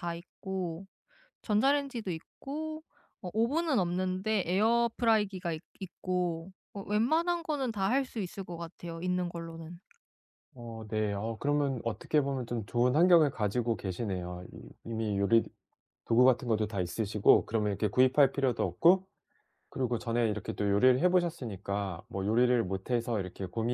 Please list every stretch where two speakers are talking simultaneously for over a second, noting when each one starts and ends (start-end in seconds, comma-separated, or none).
none